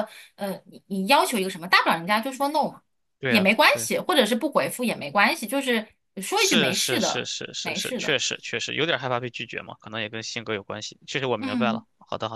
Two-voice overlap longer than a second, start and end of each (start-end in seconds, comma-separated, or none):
6.3-8.2